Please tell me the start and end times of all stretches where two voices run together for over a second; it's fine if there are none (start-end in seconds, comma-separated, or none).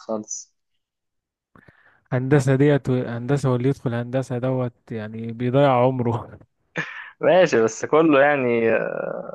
none